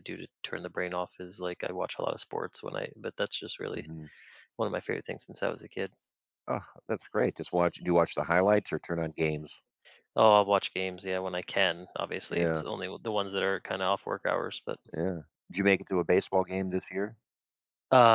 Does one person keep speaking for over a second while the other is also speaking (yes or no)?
no